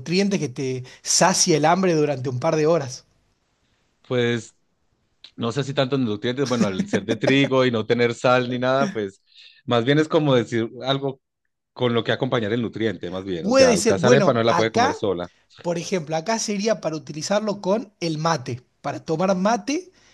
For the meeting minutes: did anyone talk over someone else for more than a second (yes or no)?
yes